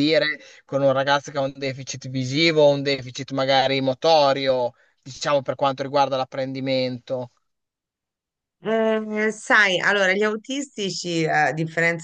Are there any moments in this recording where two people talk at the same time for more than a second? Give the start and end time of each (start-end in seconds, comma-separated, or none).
none